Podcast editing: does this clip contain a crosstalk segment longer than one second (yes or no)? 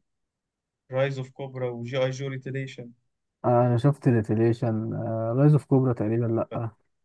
no